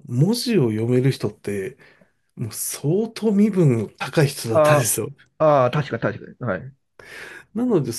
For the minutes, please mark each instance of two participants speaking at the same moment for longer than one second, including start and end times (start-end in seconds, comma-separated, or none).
none